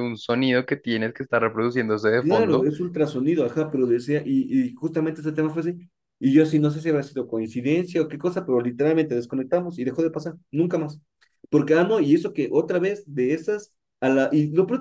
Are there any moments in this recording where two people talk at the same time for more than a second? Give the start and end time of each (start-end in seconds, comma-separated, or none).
none